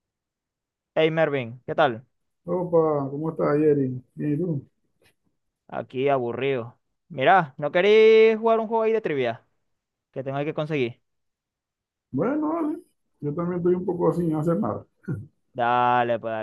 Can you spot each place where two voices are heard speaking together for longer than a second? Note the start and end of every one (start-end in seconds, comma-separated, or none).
none